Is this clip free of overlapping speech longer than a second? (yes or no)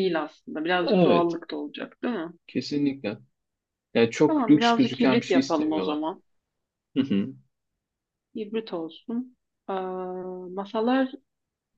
no